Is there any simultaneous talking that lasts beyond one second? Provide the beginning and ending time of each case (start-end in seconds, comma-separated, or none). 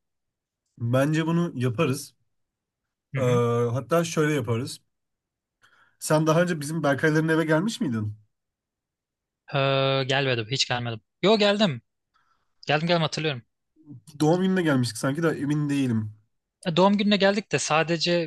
none